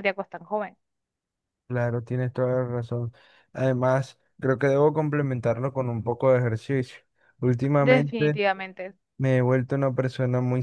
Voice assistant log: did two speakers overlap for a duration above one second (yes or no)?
no